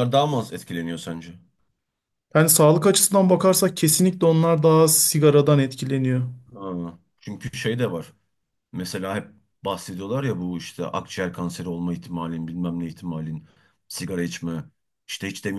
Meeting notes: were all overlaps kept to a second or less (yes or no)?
yes